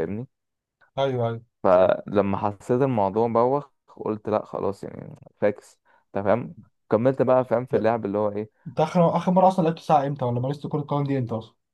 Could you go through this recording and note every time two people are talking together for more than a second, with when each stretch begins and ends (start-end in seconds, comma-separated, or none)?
none